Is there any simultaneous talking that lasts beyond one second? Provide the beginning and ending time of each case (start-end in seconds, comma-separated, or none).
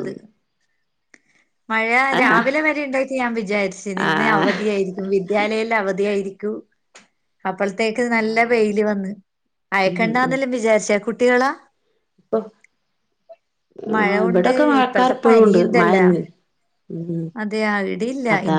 13.9-16.0